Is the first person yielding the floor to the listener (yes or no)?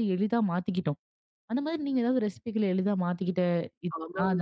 yes